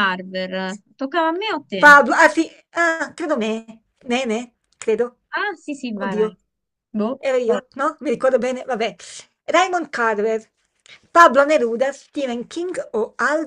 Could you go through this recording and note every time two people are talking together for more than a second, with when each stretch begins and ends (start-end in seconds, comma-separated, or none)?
none